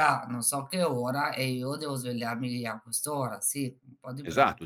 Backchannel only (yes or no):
no